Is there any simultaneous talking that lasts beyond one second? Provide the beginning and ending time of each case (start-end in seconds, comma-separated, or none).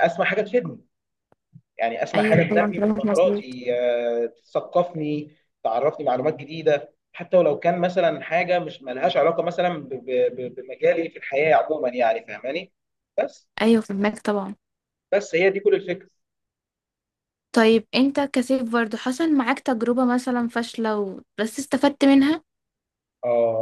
2.1-3.6